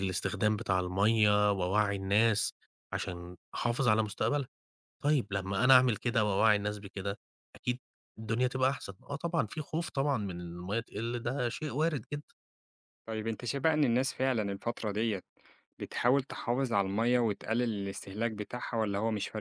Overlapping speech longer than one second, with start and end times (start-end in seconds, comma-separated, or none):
none